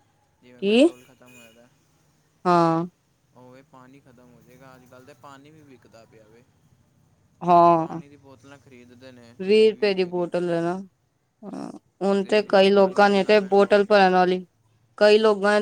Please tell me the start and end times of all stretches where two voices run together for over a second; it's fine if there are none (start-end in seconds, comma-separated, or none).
12.2-14.0